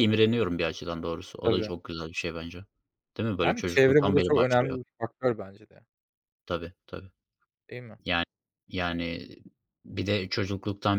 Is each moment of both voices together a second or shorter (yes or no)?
no